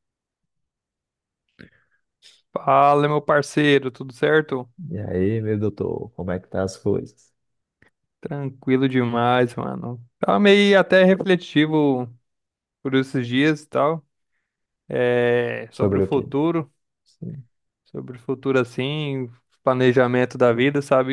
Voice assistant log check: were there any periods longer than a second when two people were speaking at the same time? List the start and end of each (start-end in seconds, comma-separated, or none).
none